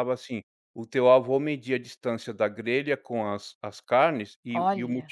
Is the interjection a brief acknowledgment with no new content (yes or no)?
yes